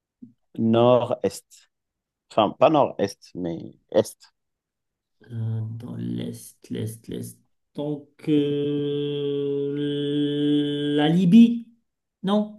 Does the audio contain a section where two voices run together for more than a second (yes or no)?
no